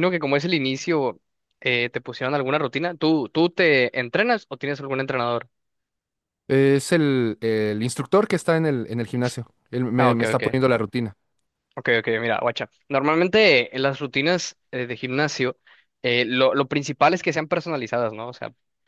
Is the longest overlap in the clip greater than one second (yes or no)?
no